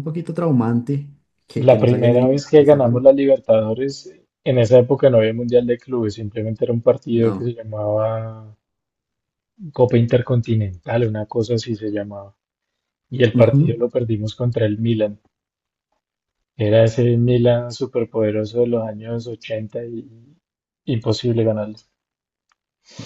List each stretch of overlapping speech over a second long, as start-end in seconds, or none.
1.5-3.1